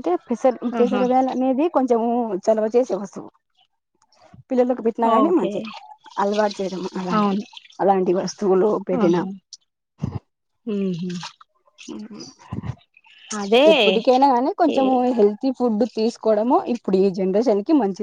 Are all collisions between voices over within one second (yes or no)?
yes